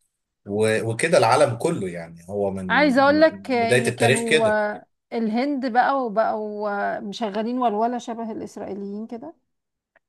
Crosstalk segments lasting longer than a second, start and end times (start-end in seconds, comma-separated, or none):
3.1-4.6